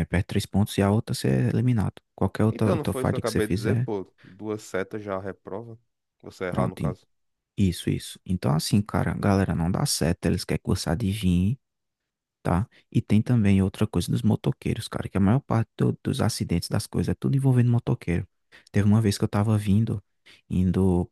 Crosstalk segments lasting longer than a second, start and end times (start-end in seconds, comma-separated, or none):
2.5-3.9